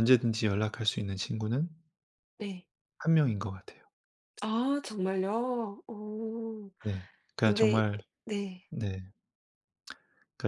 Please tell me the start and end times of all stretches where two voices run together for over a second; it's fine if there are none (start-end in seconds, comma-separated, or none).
none